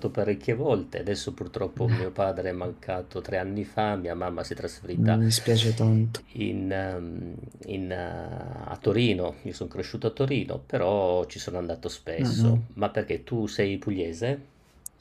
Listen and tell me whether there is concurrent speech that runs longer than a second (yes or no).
no